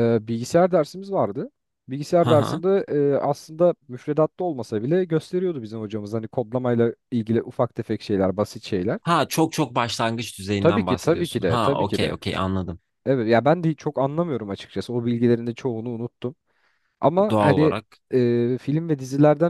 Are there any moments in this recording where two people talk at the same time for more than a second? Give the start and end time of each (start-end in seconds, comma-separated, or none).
10.6-12.2